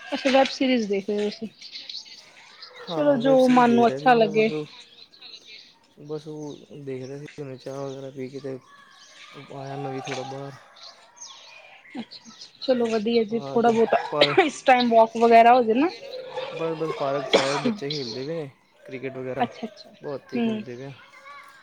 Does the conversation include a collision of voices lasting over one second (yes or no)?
yes